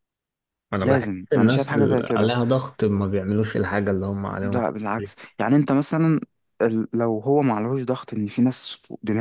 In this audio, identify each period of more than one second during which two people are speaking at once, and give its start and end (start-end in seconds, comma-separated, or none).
0.8-2.3